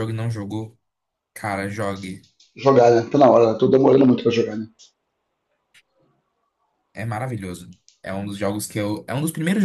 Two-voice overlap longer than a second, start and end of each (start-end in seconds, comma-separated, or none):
none